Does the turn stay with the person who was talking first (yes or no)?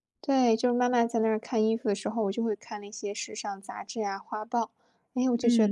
no